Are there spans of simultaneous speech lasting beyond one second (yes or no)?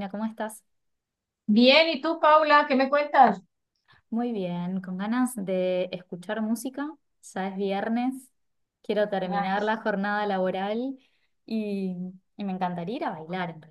no